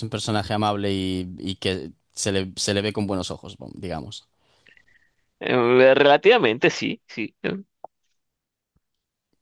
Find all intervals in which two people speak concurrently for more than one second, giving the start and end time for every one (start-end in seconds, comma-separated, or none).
none